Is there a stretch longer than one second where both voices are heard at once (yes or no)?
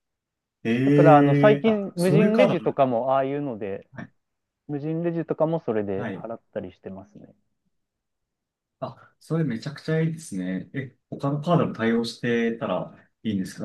yes